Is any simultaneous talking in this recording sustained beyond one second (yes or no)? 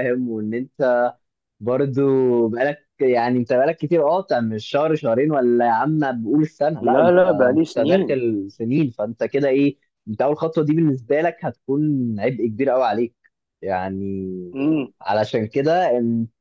yes